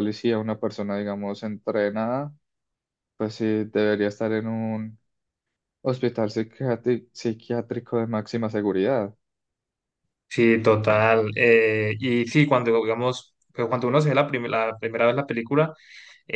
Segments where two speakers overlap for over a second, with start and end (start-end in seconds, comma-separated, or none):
none